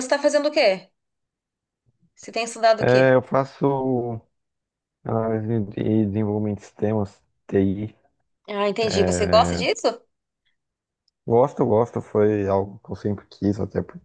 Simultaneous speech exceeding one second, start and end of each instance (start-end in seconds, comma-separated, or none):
none